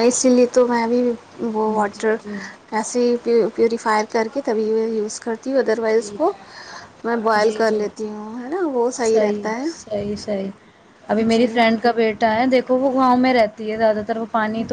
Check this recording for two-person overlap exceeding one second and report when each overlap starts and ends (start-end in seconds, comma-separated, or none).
none